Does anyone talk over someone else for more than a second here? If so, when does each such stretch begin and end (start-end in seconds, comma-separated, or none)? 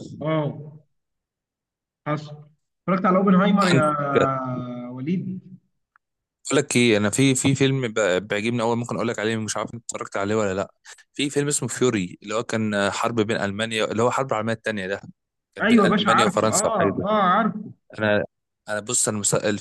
15.6-17.2